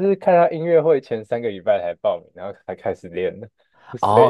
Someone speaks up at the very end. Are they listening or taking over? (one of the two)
taking over